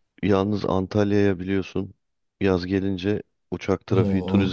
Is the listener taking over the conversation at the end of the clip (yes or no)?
no